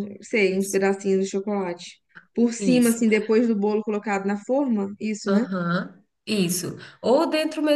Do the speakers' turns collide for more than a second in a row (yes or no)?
no